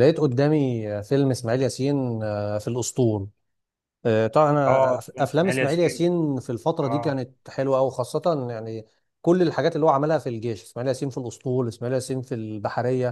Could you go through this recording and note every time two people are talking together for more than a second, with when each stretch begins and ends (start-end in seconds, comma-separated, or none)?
4.7-6.1